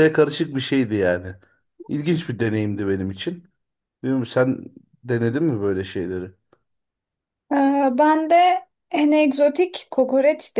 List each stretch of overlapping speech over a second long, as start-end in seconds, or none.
none